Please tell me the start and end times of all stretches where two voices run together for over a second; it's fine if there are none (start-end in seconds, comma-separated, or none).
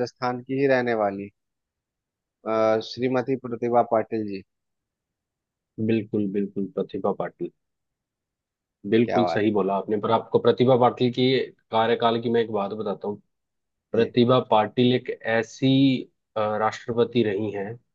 none